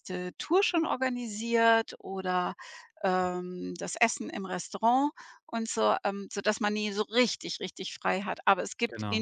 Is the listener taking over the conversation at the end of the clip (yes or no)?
no